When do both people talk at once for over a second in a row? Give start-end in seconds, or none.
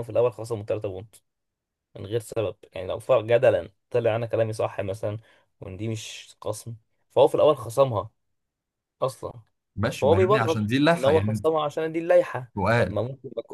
10.0-11.5